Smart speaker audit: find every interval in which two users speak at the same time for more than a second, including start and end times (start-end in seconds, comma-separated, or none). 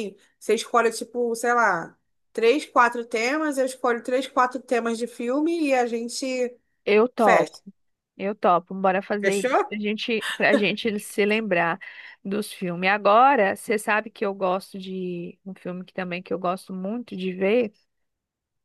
none